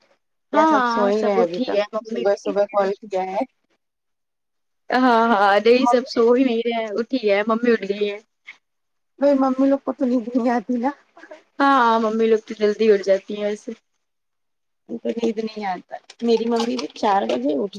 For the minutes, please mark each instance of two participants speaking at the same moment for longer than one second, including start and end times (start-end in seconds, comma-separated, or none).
0.5-2.9